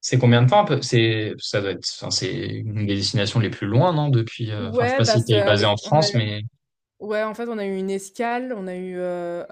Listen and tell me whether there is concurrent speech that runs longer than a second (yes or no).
yes